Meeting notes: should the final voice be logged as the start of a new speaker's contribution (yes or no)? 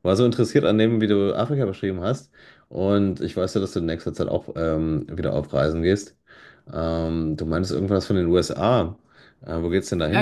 yes